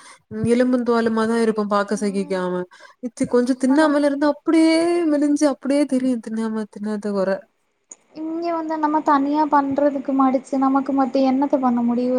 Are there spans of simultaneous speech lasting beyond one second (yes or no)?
no